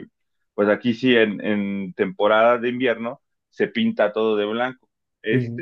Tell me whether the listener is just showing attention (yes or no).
yes